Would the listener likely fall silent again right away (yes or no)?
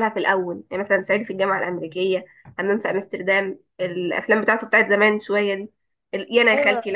yes